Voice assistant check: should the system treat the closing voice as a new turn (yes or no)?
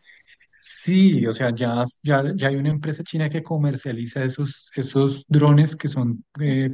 no